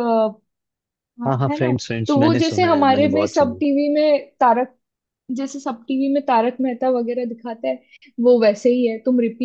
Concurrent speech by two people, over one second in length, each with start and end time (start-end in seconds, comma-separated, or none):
1.3-3.6